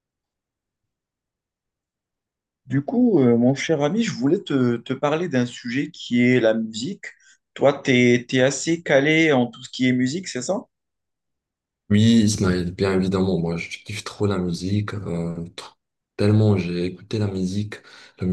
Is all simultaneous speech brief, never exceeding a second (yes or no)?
yes